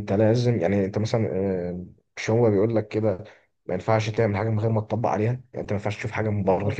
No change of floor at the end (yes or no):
yes